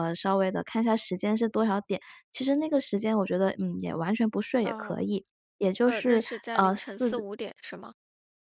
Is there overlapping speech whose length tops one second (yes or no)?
yes